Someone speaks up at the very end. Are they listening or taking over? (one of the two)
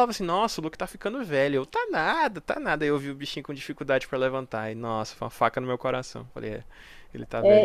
taking over